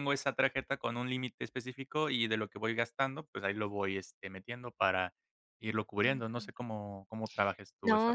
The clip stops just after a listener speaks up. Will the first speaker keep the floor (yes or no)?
no